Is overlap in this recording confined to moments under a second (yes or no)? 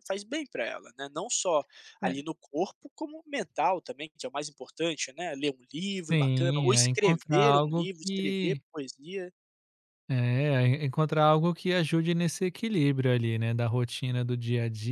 no